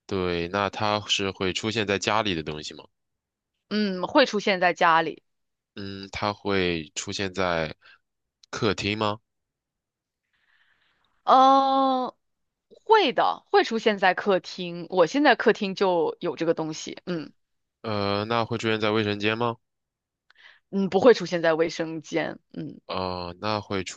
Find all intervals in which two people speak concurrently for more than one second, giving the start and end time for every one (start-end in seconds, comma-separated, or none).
none